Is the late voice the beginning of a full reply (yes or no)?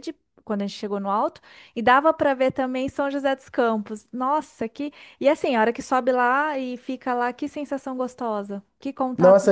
yes